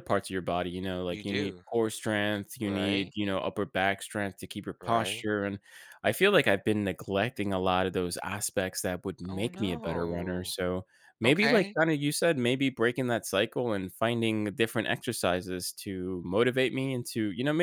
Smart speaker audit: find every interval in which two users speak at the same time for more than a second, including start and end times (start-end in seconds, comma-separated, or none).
9.3-10.5